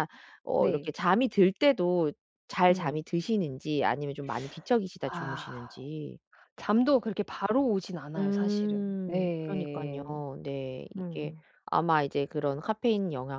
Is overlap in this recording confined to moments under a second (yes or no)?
no